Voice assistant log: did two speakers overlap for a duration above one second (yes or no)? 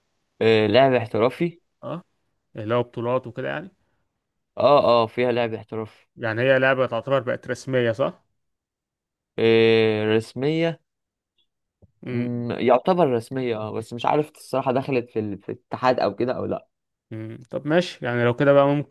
no